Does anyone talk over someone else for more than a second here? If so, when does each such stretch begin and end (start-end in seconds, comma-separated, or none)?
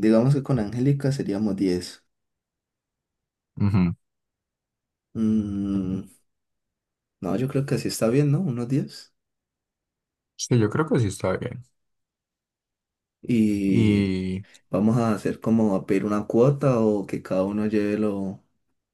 none